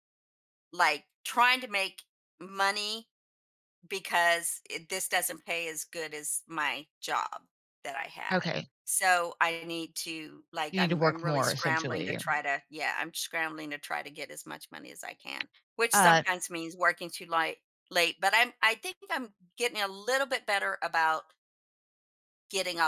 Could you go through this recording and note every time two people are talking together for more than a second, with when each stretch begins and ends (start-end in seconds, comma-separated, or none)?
10.7-12.2